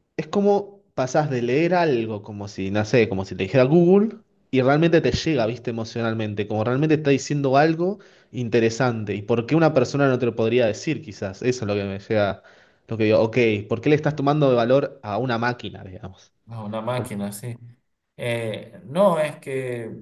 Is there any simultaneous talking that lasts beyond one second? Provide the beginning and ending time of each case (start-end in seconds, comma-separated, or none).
none